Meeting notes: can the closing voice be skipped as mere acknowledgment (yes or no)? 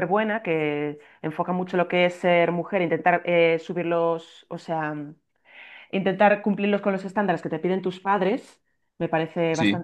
yes